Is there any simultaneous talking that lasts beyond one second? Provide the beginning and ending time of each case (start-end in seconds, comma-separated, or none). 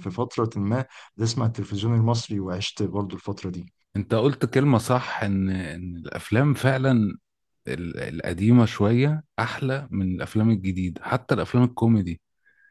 none